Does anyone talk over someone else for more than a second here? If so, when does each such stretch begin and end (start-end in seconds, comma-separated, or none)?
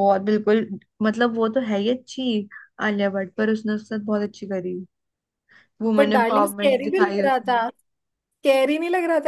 5.8-7.6